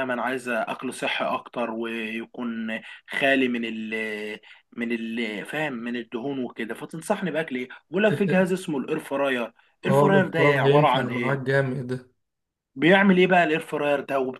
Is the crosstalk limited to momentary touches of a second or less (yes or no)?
no